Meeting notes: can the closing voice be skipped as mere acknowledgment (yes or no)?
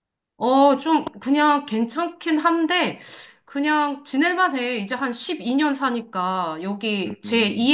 yes